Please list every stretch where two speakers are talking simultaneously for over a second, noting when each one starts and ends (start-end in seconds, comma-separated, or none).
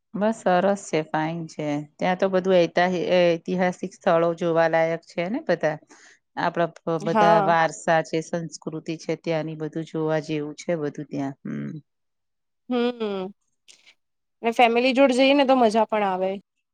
none